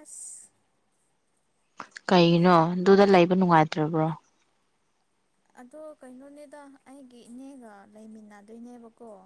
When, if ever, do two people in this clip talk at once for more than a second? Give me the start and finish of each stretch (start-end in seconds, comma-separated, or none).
none